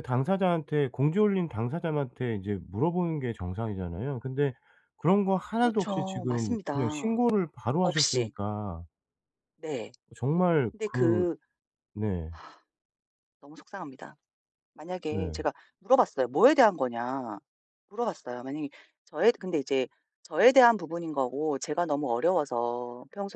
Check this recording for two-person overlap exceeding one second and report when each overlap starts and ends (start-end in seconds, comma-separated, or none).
5.5-7.2